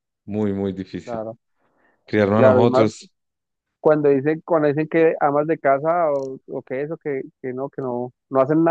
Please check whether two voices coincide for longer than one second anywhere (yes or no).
no